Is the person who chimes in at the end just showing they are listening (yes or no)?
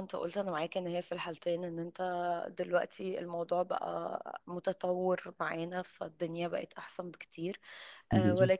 yes